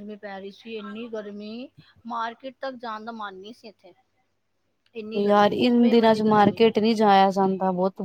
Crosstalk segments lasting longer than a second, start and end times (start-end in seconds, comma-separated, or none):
5.2-6.6